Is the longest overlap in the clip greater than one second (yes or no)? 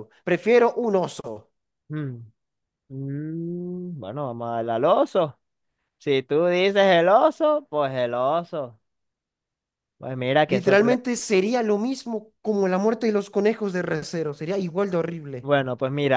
no